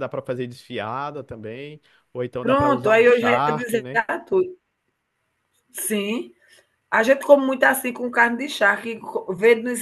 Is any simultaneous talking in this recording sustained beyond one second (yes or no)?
yes